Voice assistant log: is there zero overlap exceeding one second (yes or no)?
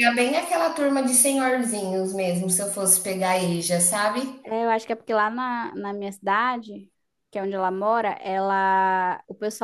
yes